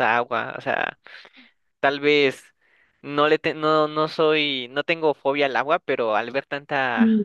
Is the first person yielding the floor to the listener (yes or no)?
no